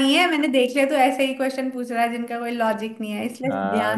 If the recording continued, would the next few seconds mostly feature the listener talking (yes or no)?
yes